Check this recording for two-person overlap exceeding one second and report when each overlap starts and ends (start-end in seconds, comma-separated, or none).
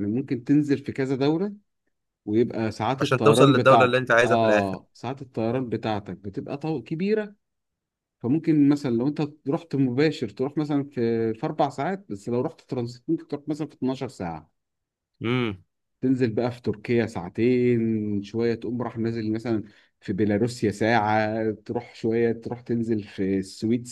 3.0-4.7